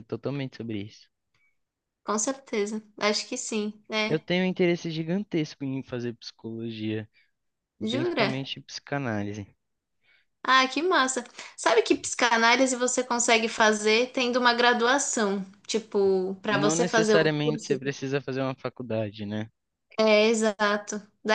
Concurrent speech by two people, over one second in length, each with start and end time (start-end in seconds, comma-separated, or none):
16.5-17.9